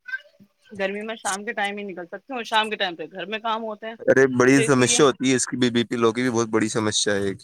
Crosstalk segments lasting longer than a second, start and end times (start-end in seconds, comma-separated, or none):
none